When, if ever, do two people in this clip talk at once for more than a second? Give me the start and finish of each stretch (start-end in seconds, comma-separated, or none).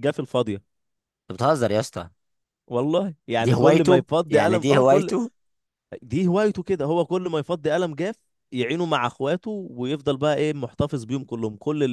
3.4-5.1